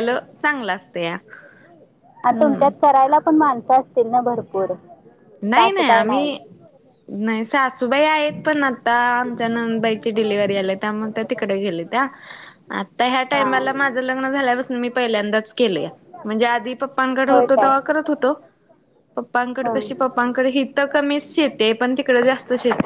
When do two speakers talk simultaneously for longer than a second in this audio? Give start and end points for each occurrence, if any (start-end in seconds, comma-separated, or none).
none